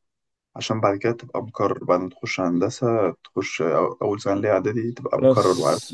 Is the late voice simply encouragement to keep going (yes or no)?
no